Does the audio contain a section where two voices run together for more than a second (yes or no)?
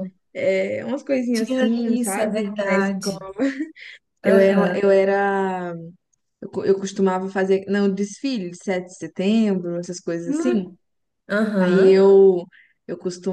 yes